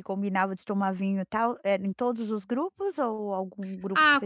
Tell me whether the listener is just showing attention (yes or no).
no